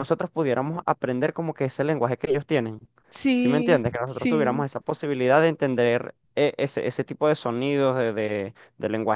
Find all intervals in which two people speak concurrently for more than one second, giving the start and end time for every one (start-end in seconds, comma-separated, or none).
3.3-4.6